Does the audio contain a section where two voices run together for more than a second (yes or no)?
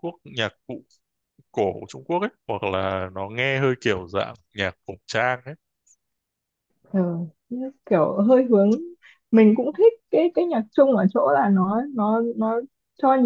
no